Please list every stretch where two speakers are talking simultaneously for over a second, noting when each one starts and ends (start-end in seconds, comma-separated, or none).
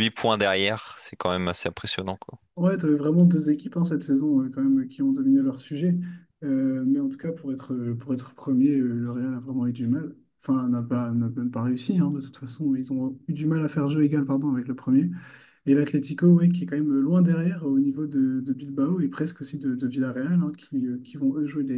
none